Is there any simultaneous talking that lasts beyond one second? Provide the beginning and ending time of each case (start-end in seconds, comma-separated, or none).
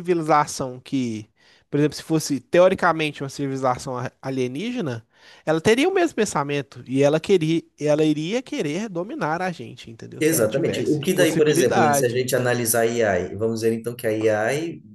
10.2-12.2